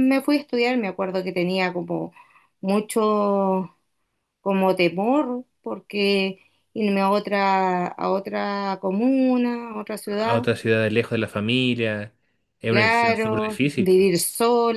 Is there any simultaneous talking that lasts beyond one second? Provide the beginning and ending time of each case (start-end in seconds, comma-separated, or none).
12.7-13.9